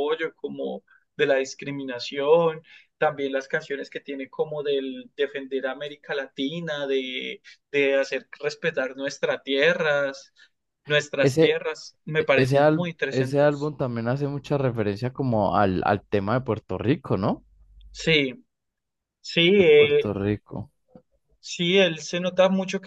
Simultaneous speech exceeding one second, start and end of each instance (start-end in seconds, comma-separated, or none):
12.3-13.7